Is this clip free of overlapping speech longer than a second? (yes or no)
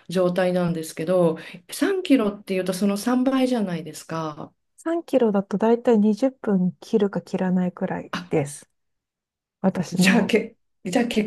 yes